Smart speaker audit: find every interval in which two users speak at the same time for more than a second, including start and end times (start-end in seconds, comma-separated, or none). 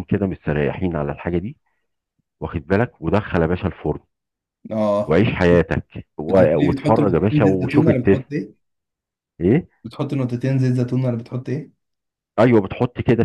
6.3-8.4